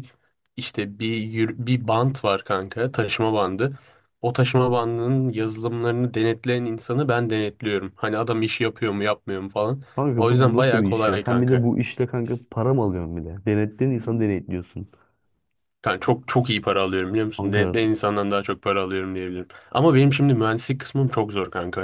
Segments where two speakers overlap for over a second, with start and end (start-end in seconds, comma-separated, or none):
9.9-11.7